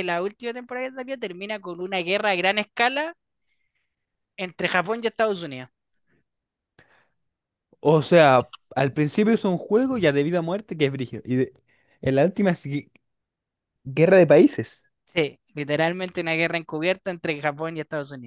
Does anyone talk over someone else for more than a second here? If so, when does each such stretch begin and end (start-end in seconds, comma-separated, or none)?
none